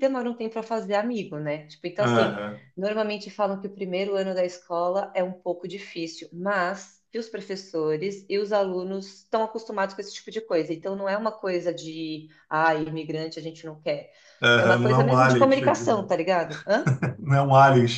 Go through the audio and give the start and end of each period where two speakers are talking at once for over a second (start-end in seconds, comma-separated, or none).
14.6-16.1